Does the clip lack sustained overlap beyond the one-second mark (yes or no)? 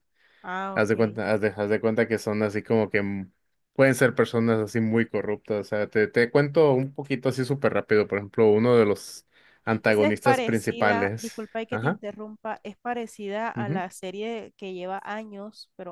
no